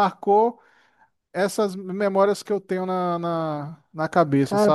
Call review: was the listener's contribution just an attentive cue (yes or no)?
no